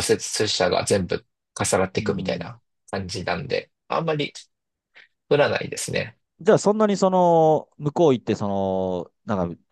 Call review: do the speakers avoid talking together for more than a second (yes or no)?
yes